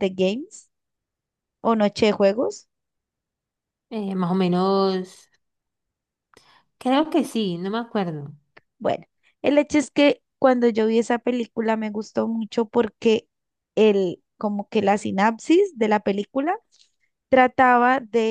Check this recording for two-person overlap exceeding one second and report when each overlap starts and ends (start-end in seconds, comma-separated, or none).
none